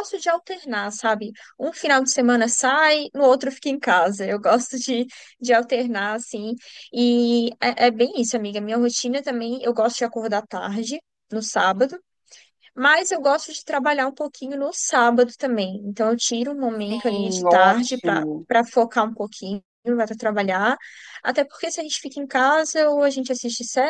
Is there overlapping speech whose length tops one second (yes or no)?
yes